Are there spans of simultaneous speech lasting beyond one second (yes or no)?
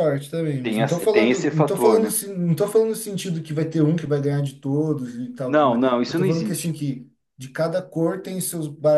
yes